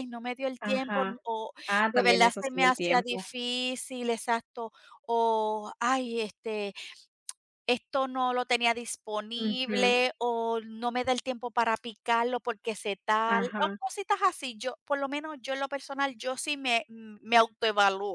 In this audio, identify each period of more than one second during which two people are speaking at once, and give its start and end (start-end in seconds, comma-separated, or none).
1.9-3.3